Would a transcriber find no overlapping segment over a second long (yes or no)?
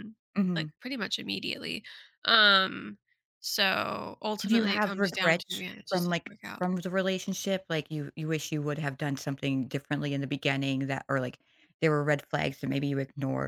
no